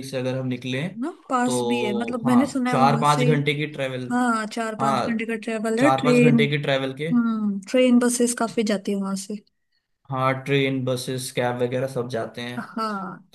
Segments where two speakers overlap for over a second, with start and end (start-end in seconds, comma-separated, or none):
1.4-3.2